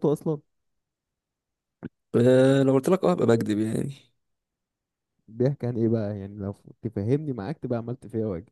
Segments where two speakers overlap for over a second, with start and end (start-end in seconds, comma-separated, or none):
none